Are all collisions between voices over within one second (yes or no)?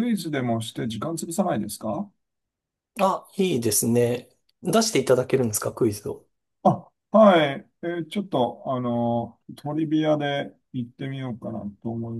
yes